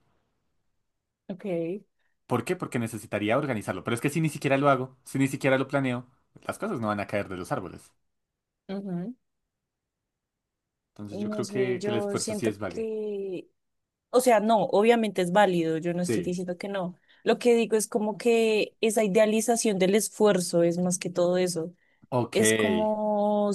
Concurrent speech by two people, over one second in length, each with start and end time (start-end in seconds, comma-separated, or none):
11.1-12.9